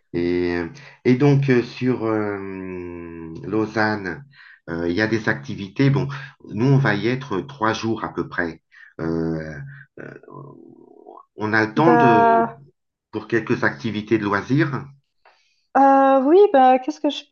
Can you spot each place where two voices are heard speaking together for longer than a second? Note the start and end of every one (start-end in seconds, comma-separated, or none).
none